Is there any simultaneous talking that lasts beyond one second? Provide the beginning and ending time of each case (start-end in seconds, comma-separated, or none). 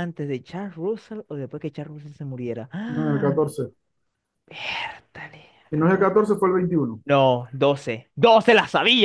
none